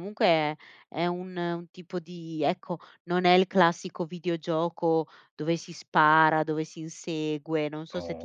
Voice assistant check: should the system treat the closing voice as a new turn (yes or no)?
no